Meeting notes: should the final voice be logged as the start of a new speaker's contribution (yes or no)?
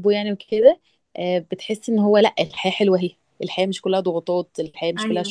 yes